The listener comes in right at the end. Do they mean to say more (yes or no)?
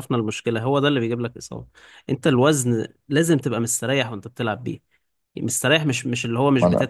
no